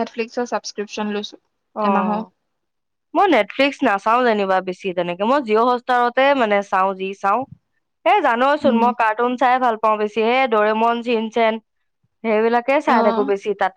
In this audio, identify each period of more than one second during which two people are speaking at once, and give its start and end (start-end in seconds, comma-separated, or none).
none